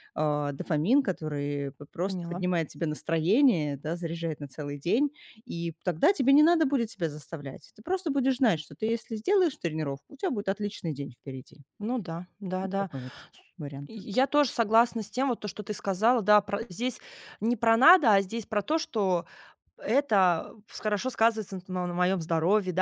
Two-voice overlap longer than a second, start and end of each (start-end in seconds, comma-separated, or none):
none